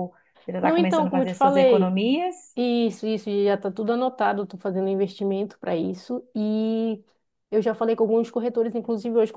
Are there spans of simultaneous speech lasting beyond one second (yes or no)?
yes